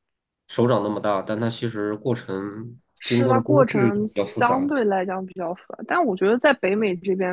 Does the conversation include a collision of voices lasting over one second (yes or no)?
yes